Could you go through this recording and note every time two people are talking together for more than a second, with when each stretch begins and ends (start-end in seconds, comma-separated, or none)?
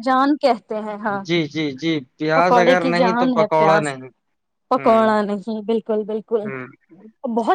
2.4-3.9